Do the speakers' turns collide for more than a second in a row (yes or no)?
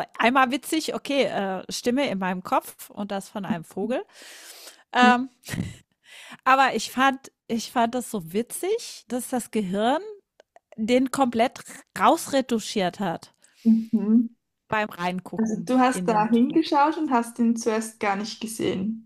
yes